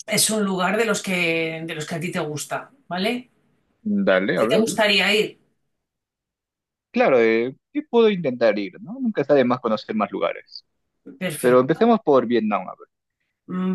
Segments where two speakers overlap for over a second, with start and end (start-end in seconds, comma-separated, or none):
none